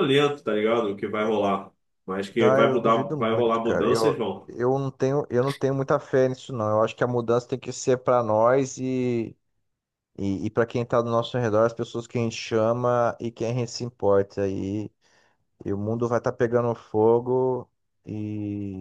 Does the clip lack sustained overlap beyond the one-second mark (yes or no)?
no